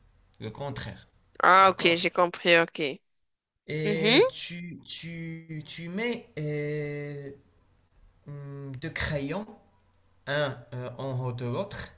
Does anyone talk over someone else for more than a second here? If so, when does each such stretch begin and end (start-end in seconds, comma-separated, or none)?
none